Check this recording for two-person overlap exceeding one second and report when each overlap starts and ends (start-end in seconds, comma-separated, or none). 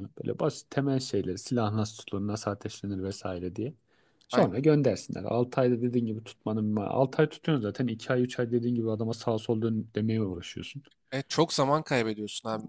none